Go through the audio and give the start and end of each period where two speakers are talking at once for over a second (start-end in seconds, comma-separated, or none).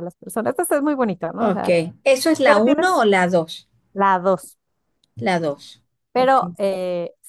none